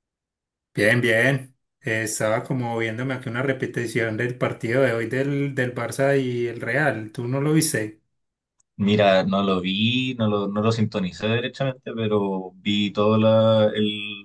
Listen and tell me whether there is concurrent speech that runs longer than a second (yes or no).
no